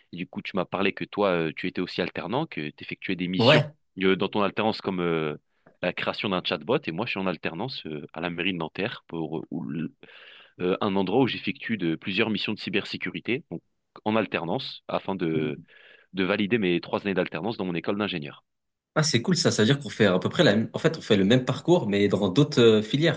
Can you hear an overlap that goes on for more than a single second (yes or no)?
no